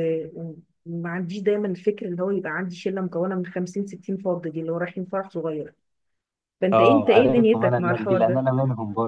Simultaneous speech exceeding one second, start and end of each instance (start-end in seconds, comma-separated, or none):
6.7-8.4